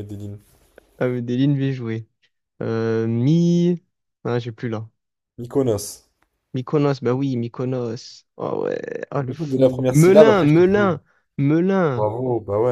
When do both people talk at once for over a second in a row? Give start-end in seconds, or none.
9.2-10.9